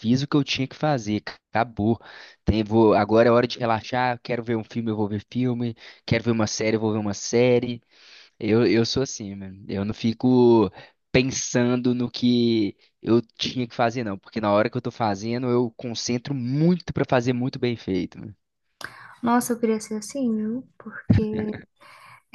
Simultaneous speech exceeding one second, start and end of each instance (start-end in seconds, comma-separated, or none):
none